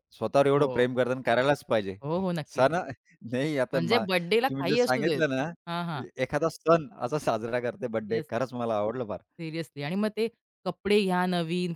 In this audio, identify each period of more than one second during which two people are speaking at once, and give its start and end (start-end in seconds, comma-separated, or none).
3.7-5.2